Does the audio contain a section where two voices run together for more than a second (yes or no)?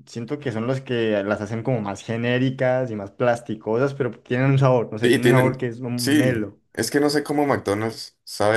yes